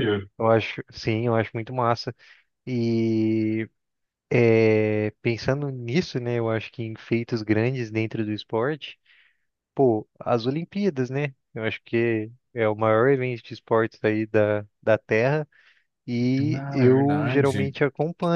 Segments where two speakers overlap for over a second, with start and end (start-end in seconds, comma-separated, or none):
16.4-17.8